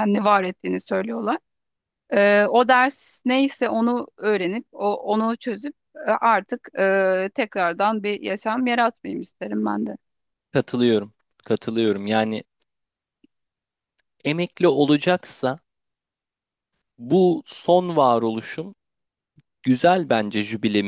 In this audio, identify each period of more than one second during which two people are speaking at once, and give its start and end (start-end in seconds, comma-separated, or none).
none